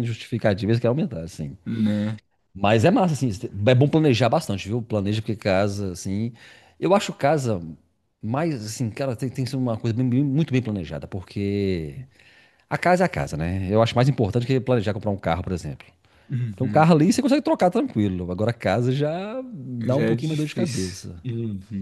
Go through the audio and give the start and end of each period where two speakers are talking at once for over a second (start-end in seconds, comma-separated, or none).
19.8-21.2